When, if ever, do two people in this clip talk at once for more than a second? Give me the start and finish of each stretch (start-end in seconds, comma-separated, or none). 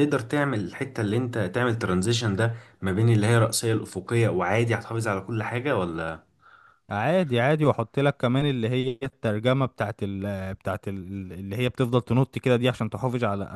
none